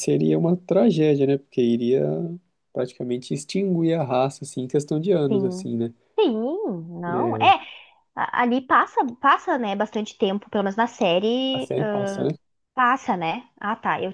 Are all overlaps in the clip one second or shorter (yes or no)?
yes